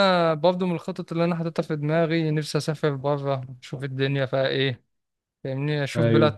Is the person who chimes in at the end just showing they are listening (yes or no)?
yes